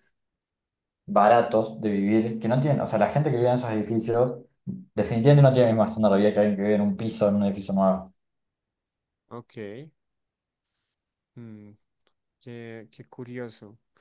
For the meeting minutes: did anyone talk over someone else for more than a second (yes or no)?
no